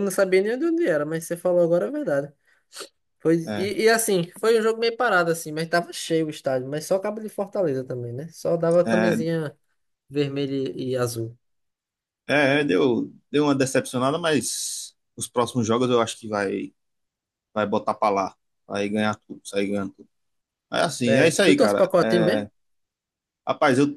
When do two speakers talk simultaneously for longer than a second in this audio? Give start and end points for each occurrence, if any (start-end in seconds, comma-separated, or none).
21.1-22.5